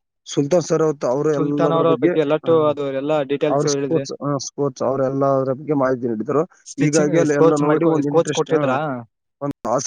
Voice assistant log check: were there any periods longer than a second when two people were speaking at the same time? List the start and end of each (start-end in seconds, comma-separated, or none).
6.8-8.8